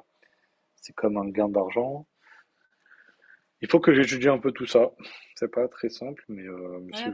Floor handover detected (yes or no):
yes